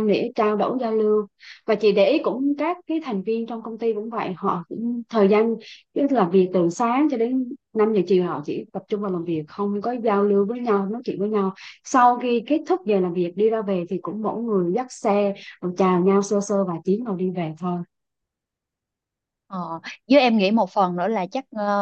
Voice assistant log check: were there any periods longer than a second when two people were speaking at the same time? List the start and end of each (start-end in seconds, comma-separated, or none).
none